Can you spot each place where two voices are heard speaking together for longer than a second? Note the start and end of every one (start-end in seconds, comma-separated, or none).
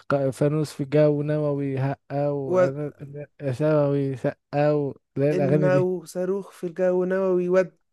none